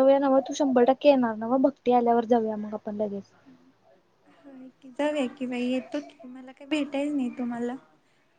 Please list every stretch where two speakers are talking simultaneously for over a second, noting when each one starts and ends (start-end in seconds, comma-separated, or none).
none